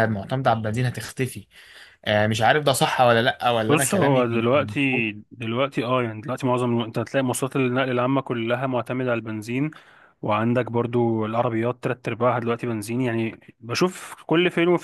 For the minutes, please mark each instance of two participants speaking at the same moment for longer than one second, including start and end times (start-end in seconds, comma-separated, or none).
3.7-5.1